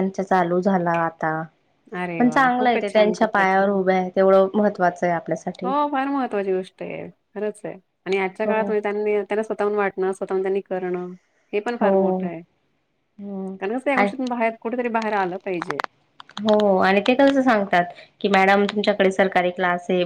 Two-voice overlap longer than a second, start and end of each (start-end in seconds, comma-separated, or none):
2.2-3.8